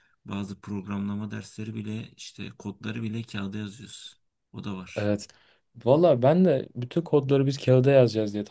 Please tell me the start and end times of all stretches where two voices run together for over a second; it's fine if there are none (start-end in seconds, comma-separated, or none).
none